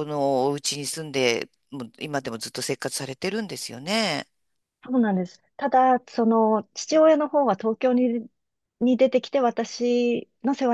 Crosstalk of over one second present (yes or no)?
no